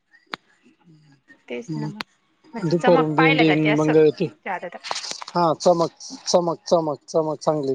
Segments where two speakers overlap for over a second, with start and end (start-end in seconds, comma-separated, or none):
2.5-3.9